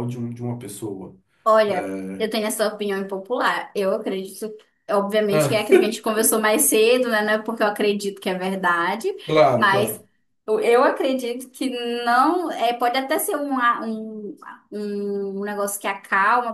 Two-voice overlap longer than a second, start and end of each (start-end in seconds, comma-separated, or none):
none